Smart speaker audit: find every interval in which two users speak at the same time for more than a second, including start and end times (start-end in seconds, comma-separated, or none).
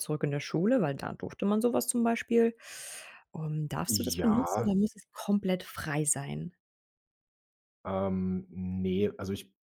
none